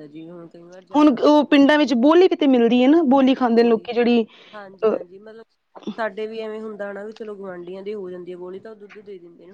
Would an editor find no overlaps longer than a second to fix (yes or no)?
yes